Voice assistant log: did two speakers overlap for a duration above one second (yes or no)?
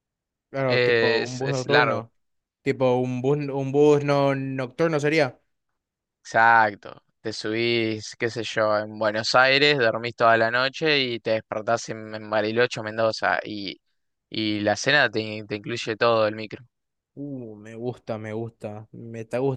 yes